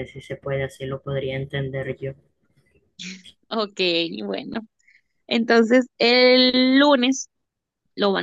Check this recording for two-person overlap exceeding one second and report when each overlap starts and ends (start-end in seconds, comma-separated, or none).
none